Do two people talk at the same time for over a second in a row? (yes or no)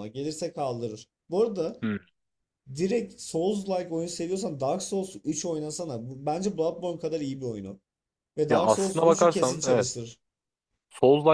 yes